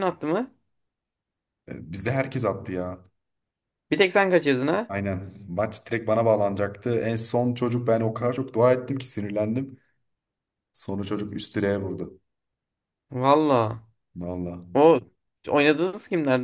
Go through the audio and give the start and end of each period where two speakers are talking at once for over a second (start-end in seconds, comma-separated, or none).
none